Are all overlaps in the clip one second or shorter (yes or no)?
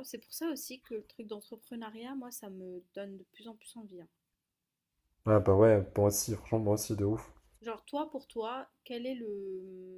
yes